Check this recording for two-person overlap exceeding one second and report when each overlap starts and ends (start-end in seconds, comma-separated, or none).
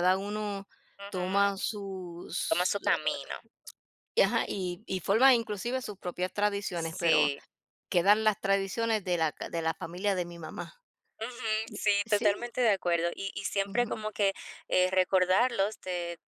none